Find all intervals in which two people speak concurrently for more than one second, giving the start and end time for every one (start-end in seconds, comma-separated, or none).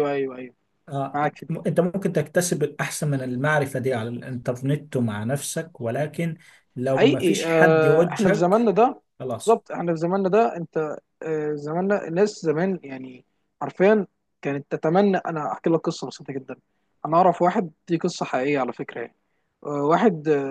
6.9-8.6